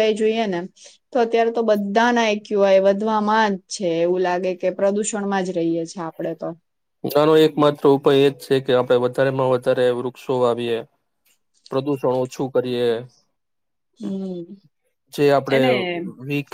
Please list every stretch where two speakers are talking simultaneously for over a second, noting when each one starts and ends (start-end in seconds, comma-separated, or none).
none